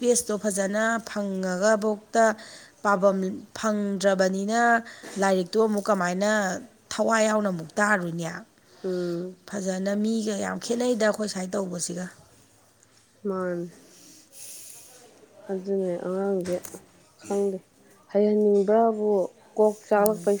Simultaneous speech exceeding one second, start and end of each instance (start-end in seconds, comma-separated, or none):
none